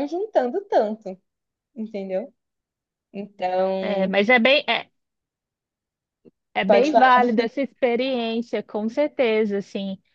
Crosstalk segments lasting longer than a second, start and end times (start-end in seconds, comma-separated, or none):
none